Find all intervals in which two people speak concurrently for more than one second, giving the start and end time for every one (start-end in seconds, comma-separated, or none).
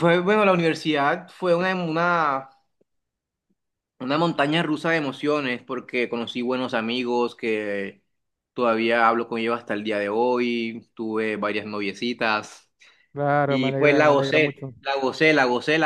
13.4-14.7